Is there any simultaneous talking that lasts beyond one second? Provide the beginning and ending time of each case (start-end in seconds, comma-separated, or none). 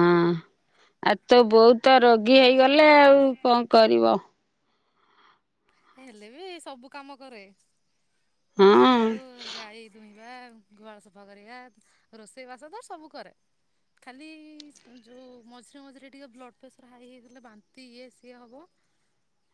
none